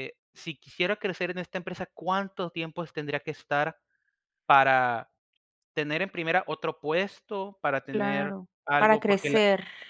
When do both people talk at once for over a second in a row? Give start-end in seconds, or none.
7.9-9.4